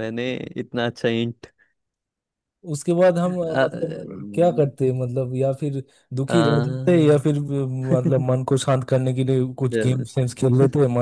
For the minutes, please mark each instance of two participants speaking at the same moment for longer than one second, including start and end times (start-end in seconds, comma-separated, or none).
none